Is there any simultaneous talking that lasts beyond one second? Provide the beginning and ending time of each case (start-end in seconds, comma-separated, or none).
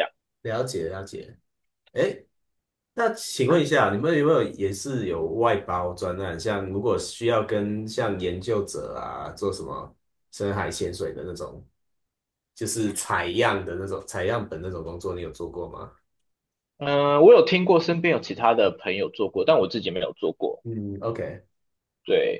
none